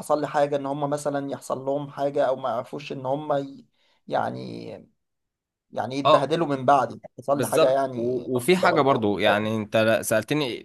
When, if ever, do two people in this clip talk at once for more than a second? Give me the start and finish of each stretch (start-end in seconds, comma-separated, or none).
7.3-9.5